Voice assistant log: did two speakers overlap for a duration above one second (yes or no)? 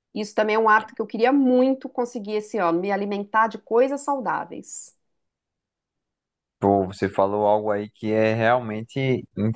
no